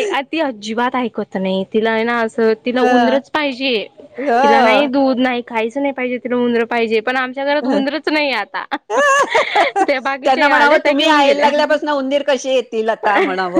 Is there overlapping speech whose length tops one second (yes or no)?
yes